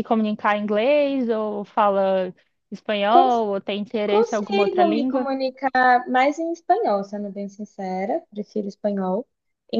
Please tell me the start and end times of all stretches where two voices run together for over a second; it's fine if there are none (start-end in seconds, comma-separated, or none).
4.0-5.3